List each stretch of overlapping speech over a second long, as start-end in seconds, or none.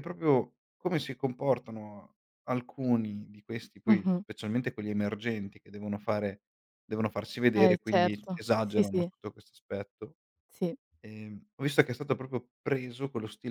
7.5-9.1